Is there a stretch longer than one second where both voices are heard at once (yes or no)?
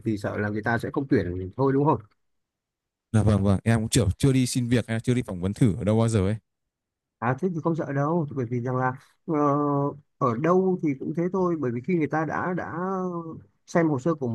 no